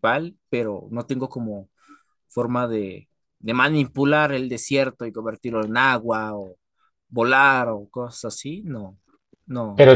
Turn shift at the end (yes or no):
yes